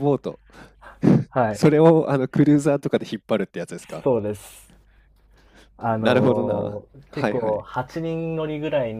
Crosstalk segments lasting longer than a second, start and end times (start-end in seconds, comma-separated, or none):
5.9-7.7